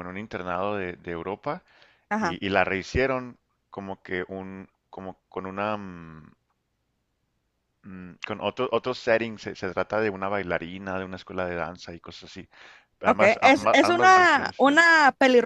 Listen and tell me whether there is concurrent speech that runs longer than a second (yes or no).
yes